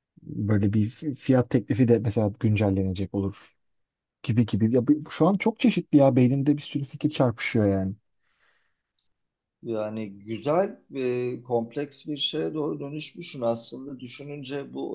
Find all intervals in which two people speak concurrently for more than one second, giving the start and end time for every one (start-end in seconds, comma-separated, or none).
none